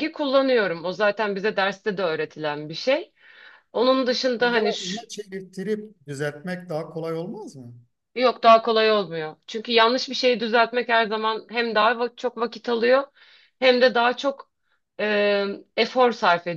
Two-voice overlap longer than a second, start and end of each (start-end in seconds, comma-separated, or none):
none